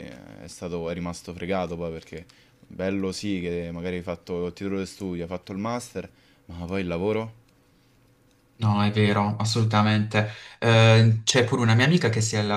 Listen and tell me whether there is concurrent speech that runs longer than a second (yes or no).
no